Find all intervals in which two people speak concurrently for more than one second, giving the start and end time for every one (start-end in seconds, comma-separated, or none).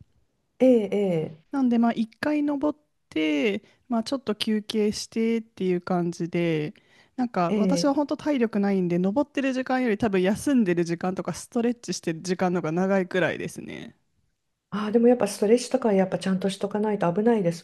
none